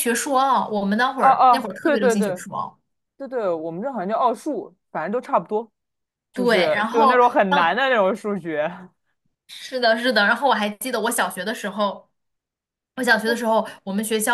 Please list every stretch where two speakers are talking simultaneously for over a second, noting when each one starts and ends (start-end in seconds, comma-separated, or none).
1.2-2.4, 6.3-7.8